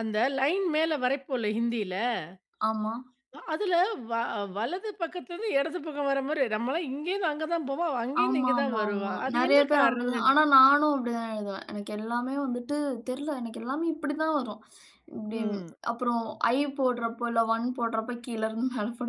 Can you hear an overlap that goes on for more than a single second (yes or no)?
yes